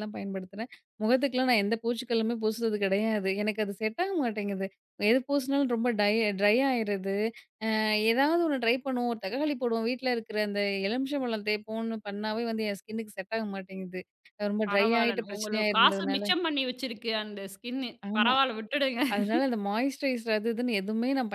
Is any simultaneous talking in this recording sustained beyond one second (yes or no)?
yes